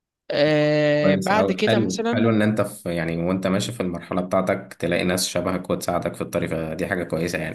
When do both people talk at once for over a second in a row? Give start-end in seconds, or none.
1.0-2.4